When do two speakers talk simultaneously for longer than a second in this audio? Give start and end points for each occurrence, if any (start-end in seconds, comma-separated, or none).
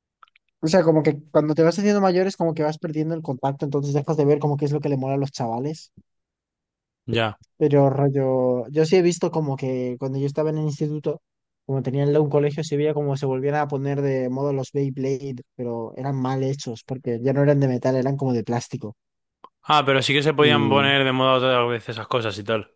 none